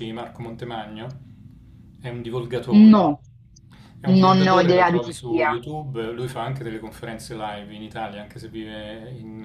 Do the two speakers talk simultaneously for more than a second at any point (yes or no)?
yes